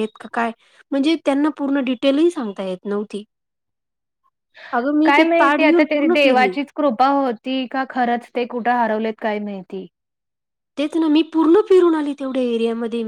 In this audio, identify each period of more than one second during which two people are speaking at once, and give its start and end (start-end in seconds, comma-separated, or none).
5.0-6.5